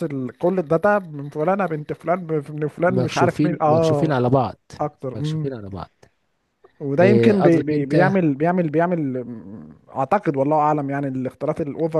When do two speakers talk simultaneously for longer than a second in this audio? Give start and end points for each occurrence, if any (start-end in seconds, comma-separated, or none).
2.8-4.2, 7.0-8.2